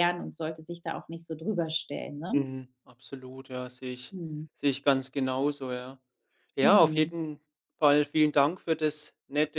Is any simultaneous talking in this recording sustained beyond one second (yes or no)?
no